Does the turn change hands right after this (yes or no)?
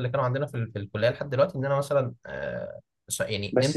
yes